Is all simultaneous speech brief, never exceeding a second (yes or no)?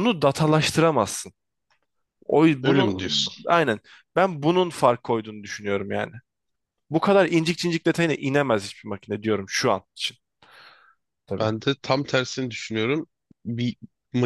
yes